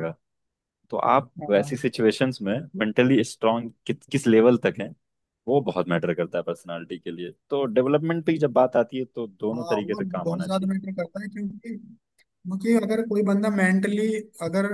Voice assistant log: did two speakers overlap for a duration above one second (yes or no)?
yes